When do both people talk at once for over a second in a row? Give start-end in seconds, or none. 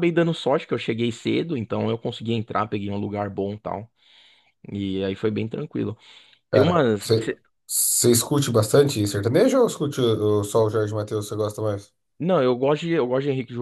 none